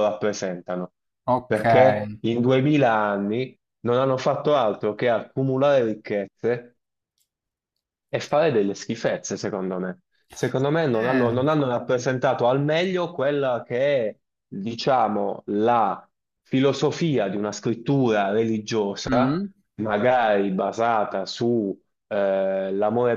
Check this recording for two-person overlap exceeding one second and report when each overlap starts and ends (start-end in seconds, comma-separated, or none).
none